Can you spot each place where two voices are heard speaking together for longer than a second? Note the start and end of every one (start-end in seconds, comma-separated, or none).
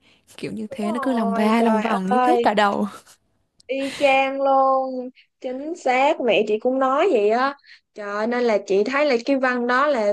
0.7-2.5